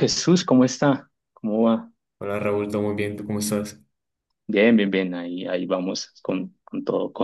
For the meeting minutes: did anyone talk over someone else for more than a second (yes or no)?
no